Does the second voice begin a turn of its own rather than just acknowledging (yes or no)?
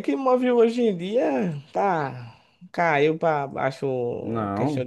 no